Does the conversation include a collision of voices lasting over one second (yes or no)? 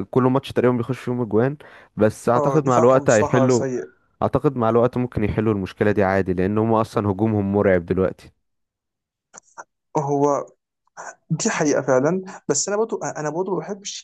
yes